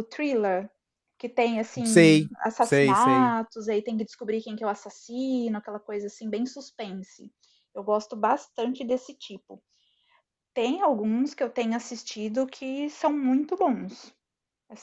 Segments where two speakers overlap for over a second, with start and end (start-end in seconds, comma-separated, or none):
1.9-3.4